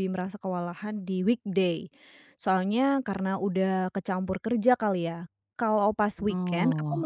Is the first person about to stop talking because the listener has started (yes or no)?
no